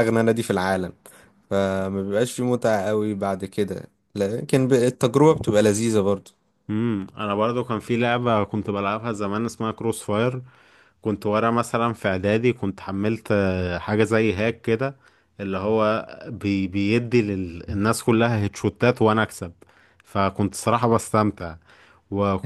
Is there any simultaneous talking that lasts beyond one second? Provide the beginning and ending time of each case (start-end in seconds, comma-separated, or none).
none